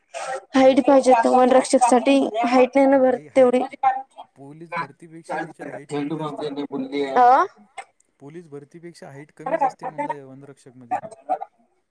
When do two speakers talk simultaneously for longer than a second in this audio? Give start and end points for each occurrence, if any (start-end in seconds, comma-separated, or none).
4.7-6.5